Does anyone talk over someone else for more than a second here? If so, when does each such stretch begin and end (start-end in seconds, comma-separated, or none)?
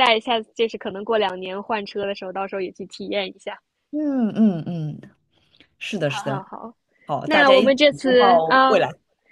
7.2-8.8